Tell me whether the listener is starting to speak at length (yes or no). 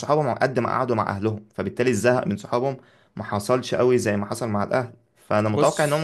no